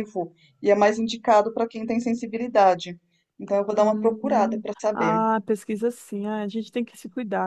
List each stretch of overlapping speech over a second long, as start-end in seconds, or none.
3.8-5.2